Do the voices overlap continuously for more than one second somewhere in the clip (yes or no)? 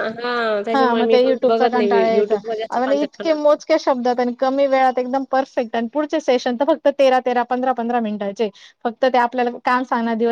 yes